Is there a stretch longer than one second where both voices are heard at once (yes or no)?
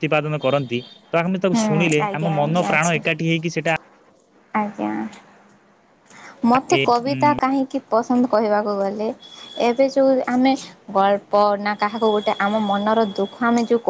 yes